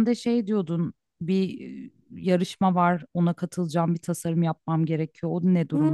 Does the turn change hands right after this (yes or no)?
yes